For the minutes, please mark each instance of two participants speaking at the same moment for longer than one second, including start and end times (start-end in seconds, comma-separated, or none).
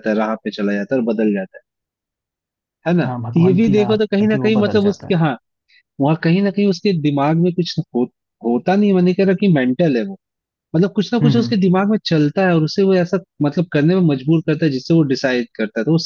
3.0-5.2